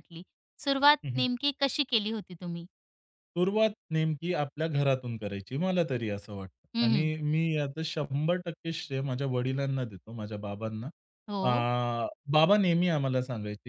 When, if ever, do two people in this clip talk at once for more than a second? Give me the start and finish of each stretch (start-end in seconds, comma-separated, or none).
none